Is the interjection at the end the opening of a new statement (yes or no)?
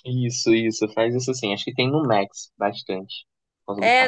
yes